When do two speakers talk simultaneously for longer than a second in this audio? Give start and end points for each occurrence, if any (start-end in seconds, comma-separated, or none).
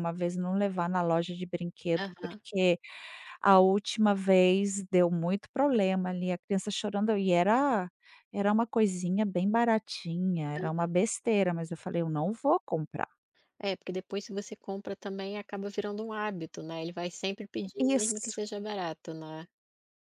none